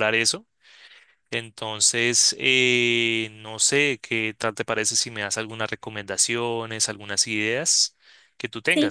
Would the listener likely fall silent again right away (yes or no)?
no